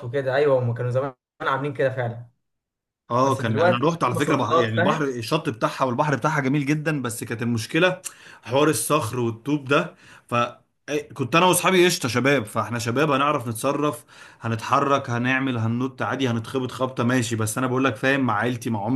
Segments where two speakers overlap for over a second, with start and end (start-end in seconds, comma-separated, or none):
3.2-5.1